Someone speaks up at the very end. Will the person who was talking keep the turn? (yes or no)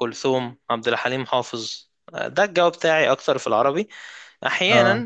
yes